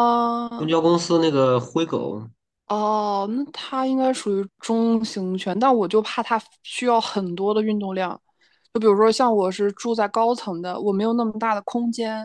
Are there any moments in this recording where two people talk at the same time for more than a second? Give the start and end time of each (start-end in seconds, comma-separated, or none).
none